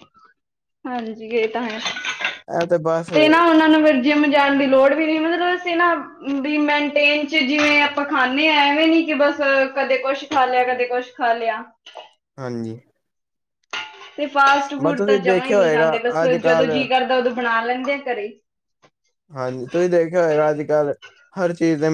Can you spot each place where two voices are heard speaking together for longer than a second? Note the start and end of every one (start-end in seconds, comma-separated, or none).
15.0-16.7